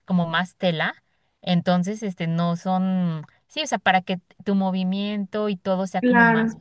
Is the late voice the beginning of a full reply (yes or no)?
yes